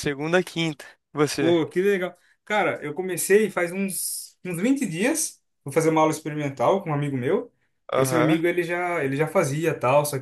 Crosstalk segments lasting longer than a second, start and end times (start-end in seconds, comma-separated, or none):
none